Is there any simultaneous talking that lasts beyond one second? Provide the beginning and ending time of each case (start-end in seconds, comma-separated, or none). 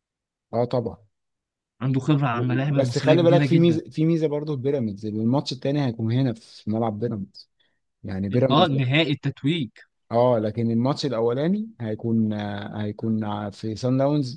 2.3-3.8